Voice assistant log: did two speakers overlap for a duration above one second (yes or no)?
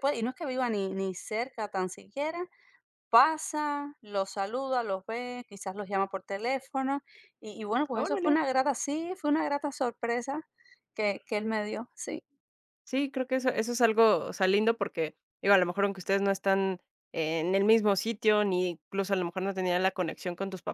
no